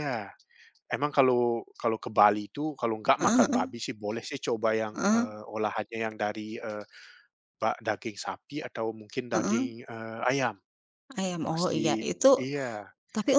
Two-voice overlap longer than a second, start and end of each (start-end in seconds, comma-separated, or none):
none